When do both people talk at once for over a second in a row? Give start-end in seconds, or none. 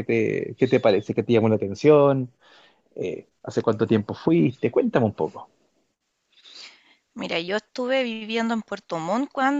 none